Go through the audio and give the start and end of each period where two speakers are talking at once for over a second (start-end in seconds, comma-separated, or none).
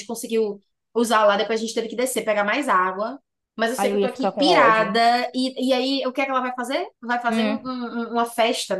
3.8-5.0